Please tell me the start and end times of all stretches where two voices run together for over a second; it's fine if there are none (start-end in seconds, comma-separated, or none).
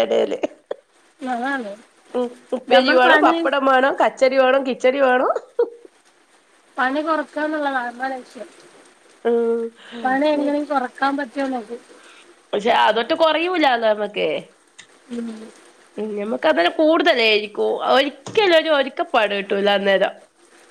none